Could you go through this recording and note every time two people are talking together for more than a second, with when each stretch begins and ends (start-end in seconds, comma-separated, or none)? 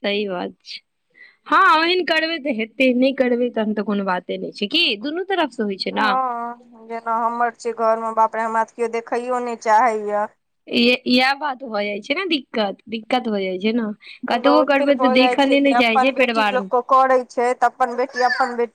14.3-16.7